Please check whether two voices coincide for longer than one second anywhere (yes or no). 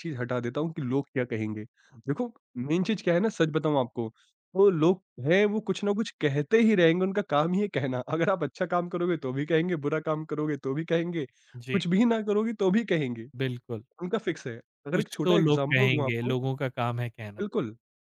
yes